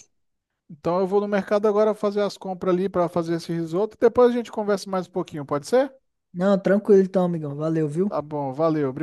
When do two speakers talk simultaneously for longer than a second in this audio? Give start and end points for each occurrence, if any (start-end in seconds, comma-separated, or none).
none